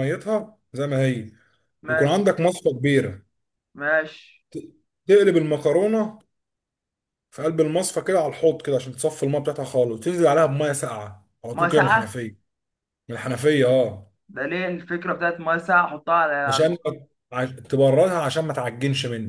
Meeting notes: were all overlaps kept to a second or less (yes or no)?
yes